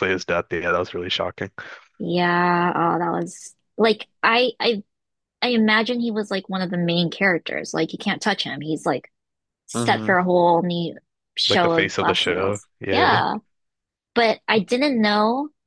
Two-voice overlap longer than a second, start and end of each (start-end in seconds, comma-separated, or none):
11.5-13.2